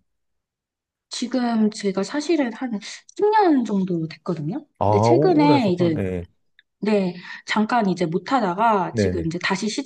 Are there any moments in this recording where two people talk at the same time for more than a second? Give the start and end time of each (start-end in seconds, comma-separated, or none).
4.8-6.0